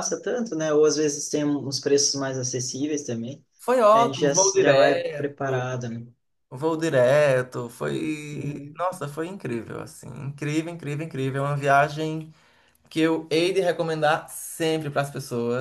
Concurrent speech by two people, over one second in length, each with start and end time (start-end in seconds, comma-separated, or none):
3.9-5.8